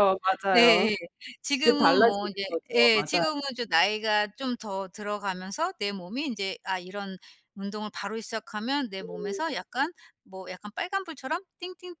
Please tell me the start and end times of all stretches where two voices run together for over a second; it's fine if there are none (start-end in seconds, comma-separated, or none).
1.6-3.2